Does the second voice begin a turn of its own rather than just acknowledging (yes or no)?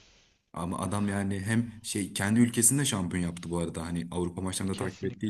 yes